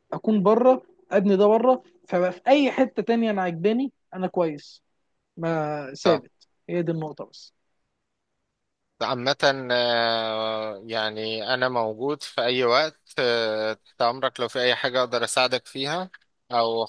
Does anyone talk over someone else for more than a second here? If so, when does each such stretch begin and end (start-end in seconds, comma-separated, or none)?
none